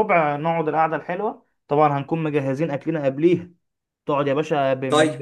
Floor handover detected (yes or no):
no